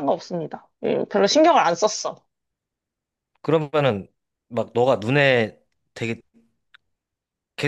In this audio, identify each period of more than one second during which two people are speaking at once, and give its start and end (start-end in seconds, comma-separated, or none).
none